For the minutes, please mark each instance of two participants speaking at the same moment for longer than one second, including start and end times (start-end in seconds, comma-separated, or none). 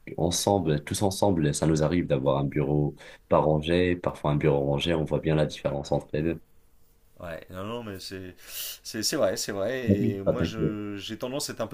none